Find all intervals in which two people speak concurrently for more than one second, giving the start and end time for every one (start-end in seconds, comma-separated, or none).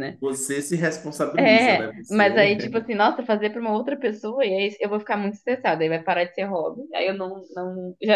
1.4-2.7